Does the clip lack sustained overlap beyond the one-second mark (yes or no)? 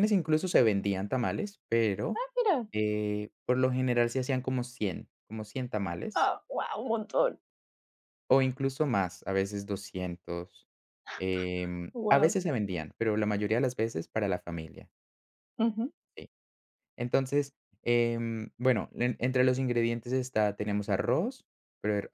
yes